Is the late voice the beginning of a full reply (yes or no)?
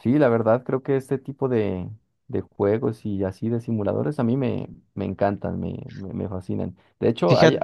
no